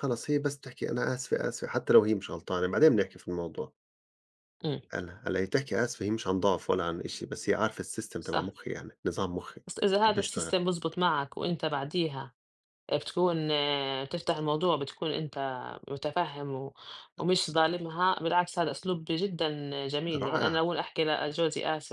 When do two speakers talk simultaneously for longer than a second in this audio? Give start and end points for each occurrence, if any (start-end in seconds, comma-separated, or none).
none